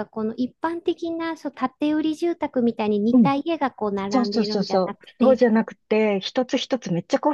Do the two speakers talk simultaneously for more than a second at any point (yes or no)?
yes